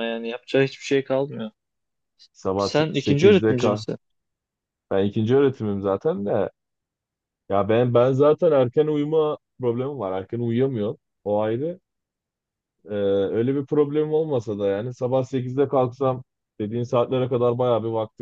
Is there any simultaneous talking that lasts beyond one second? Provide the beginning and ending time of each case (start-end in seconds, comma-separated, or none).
2.6-3.8